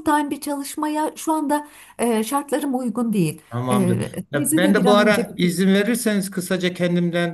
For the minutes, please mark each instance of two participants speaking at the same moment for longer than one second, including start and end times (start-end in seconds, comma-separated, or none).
3.5-5.5